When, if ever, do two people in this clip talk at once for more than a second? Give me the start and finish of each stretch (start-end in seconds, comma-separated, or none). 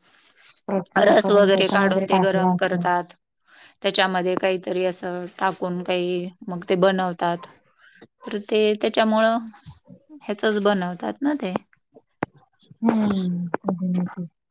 1.1-2.8